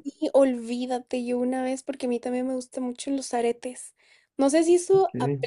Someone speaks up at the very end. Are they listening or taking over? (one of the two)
listening